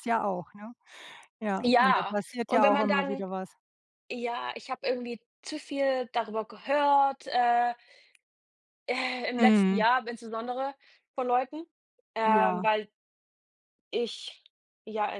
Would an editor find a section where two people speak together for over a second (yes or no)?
yes